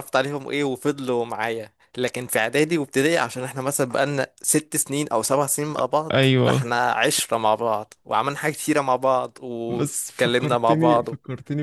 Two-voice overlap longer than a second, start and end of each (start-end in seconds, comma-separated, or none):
9.7-11.1